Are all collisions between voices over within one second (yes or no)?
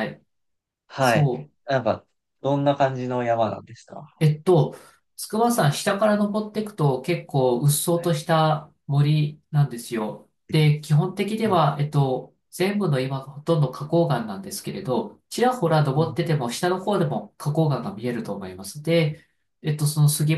yes